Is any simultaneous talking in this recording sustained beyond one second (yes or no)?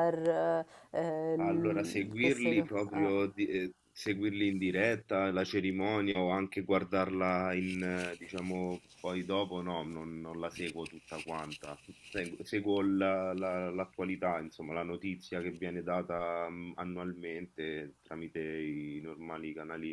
yes